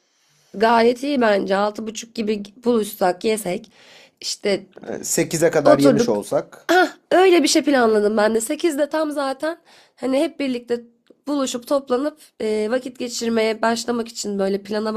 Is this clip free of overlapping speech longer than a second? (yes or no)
yes